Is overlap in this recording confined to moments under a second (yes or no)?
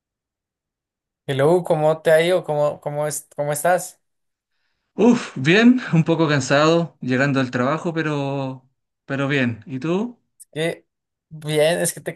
yes